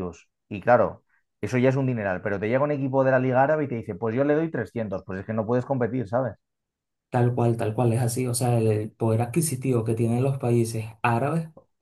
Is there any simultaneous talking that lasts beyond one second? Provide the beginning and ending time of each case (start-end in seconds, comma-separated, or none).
none